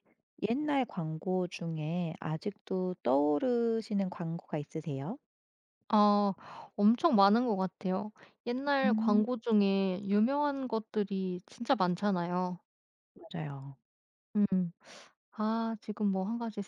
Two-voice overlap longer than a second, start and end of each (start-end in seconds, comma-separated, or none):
none